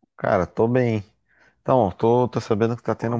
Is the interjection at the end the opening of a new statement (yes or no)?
no